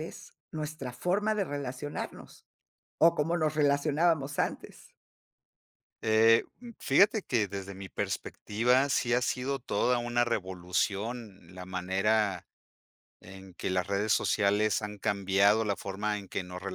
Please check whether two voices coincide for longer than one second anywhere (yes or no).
no